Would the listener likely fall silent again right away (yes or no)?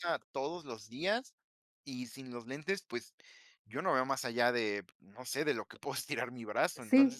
no